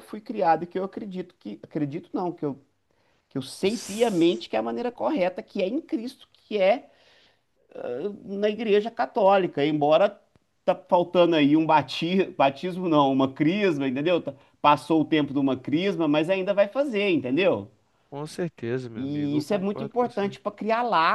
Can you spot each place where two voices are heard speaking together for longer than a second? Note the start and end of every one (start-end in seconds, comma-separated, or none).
18.9-20.4